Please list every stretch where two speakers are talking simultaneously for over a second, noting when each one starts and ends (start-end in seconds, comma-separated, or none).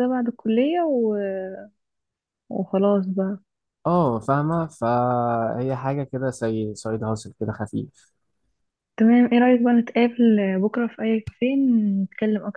none